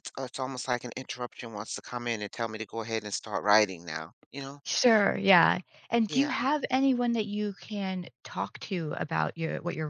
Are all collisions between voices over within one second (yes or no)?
yes